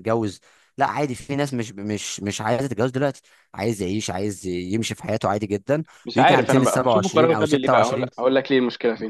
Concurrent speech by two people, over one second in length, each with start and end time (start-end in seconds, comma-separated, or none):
6.0-8.1